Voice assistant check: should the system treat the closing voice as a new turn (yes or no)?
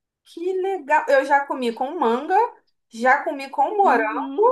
yes